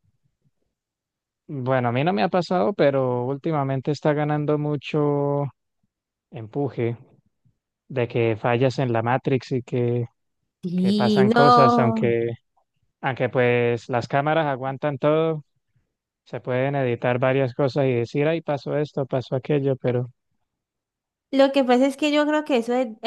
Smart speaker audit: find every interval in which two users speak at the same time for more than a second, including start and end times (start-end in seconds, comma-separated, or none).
10.8-12.1